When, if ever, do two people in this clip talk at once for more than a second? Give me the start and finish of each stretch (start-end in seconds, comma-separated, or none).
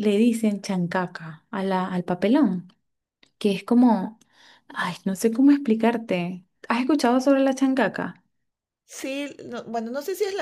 none